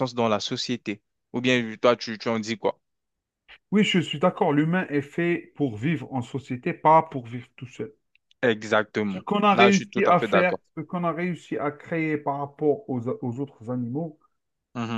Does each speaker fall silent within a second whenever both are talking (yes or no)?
no